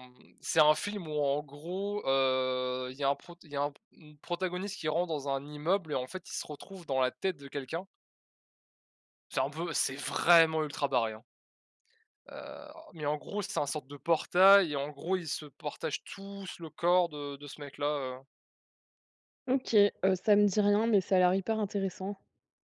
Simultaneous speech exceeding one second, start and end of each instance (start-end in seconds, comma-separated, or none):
none